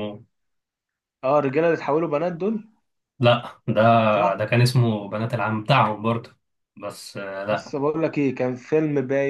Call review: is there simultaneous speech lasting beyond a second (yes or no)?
no